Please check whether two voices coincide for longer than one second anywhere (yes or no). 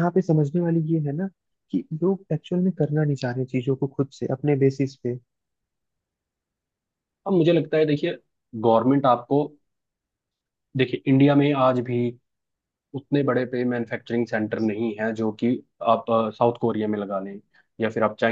no